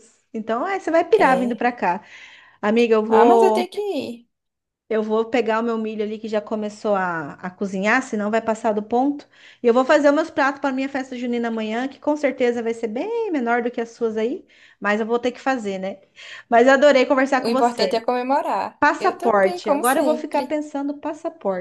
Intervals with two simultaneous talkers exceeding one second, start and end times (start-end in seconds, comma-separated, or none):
18.8-20.6